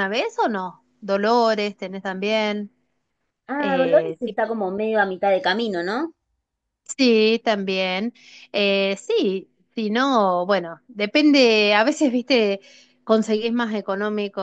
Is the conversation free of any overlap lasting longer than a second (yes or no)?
yes